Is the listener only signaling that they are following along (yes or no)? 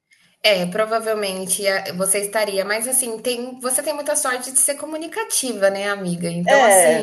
yes